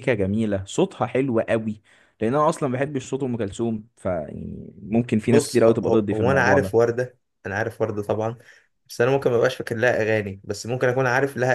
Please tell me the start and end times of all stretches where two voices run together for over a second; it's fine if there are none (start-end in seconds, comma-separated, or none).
5.3-6.8